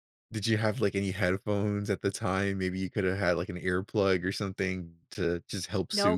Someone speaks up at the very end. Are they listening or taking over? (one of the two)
taking over